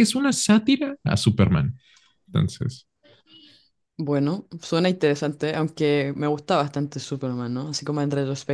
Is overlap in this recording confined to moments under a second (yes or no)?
yes